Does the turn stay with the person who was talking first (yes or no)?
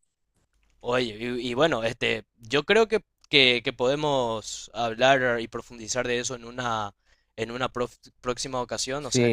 no